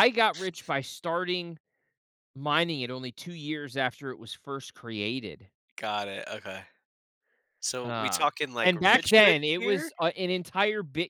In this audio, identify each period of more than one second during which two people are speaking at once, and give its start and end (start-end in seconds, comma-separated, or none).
7.8-9.9